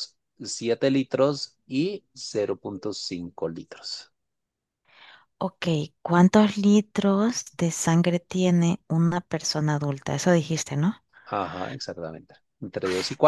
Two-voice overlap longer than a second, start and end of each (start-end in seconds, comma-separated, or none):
none